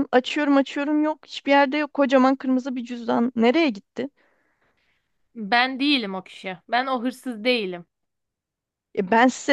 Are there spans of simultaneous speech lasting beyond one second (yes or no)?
no